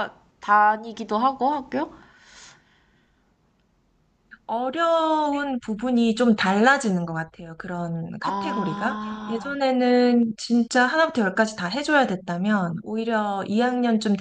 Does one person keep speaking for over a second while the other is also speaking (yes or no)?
yes